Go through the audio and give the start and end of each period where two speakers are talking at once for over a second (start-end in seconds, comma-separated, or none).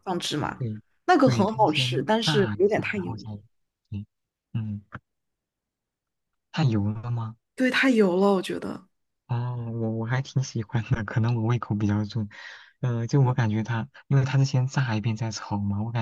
1.2-3.3